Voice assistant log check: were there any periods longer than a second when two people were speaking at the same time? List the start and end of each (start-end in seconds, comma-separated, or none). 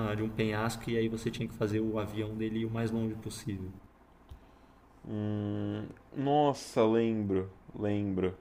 none